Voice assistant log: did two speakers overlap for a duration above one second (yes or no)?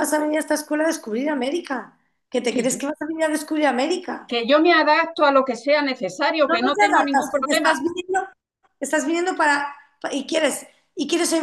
yes